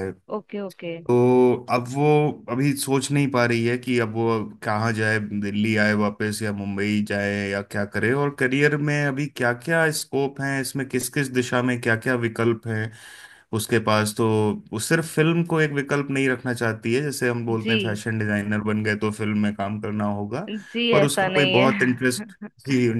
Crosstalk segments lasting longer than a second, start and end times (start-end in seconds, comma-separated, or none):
20.9-22.5